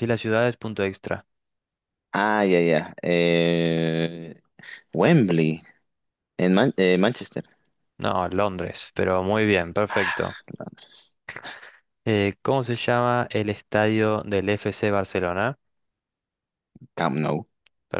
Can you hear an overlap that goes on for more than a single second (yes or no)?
no